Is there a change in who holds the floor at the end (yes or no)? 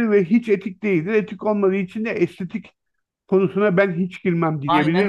yes